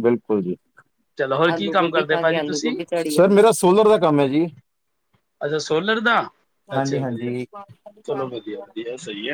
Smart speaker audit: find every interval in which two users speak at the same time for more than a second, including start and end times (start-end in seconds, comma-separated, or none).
1.5-2.7